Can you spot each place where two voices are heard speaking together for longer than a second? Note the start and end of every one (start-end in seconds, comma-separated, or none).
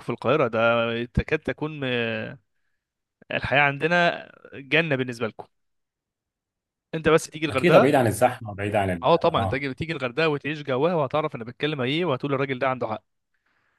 none